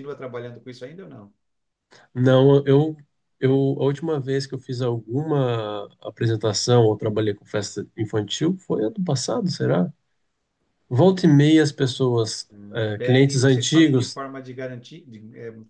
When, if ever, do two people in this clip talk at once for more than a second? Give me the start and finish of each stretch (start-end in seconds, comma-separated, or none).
13.0-14.2